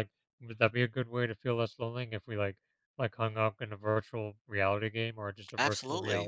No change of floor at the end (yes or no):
no